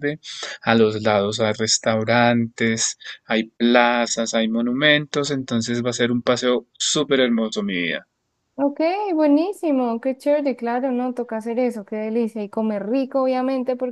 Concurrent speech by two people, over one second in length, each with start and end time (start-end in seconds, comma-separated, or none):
none